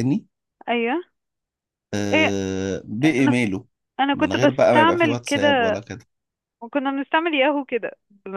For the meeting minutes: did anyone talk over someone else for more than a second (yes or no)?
yes